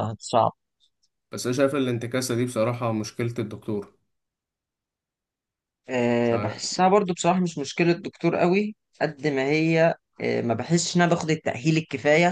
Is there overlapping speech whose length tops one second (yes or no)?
no